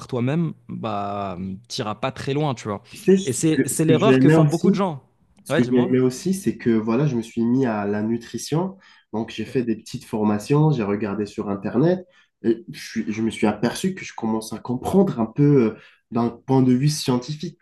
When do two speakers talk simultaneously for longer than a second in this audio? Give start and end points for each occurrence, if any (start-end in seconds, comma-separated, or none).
3.2-4.8